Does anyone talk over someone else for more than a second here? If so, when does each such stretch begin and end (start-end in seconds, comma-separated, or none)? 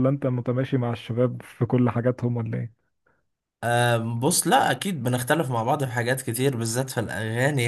none